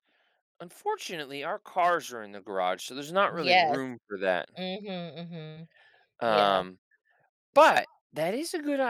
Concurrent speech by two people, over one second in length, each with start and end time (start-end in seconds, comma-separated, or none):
none